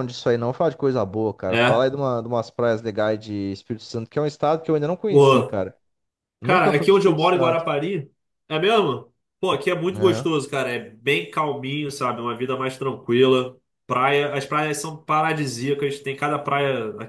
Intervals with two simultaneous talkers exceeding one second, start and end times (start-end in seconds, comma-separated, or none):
6.4-7.7